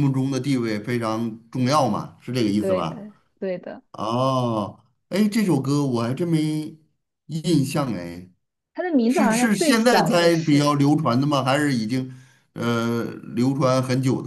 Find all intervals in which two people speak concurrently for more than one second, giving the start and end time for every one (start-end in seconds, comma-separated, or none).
9.1-10.8